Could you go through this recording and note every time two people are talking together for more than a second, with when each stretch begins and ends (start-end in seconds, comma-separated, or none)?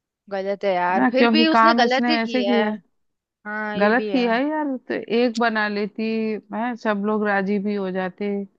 0.9-2.6